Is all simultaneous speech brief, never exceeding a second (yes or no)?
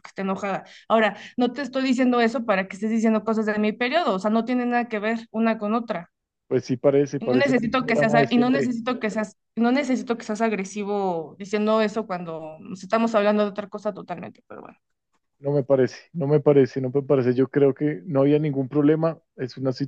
no